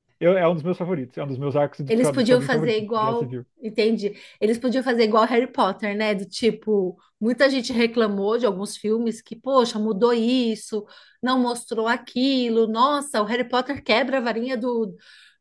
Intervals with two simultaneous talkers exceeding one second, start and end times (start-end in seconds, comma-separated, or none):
1.9-3.5